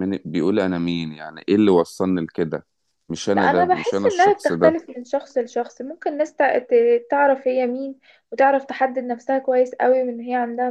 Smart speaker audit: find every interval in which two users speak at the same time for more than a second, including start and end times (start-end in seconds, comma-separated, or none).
3.3-4.8